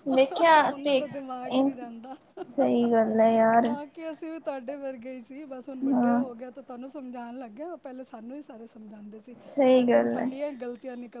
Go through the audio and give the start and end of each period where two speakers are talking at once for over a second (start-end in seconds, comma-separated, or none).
none